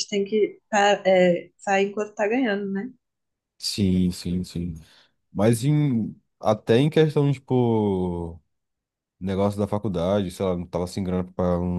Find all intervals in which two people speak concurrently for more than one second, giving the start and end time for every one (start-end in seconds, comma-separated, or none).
none